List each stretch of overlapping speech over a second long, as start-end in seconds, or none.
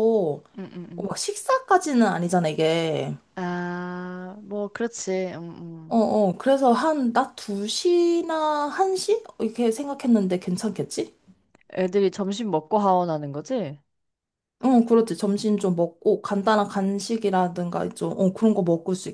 none